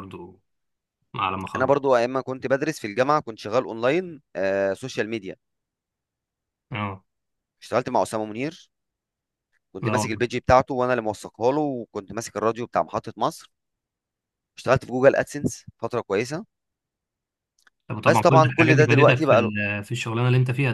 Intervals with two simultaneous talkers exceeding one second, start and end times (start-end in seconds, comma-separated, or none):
18.1-19.5